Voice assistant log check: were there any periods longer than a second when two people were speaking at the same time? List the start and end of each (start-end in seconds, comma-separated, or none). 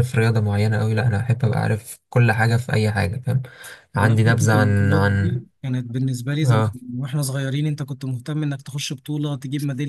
4.0-5.4